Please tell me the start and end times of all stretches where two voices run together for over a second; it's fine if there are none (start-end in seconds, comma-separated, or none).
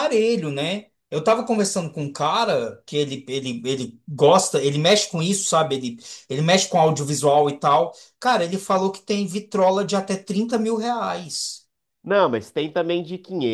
none